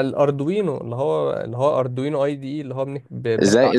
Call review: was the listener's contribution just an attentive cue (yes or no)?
no